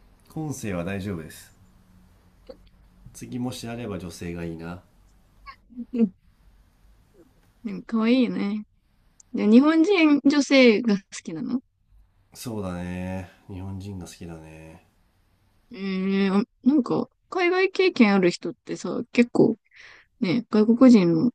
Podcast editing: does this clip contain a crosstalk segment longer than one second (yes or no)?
no